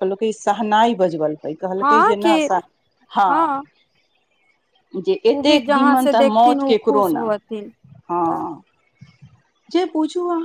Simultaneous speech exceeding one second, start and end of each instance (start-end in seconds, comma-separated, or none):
5.4-7.2